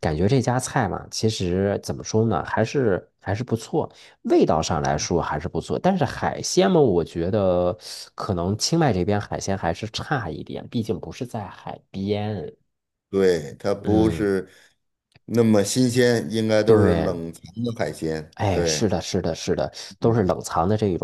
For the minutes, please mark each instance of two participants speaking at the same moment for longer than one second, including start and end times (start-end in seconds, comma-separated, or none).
none